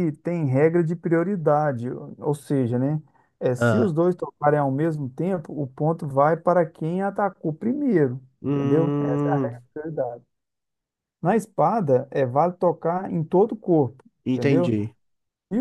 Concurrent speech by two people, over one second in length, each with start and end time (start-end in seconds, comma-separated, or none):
8.4-9.6